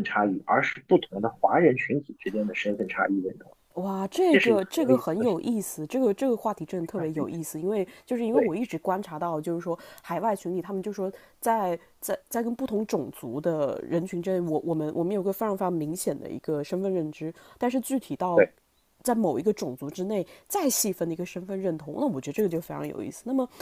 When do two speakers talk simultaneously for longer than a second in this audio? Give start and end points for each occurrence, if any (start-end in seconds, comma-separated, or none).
4.3-5.6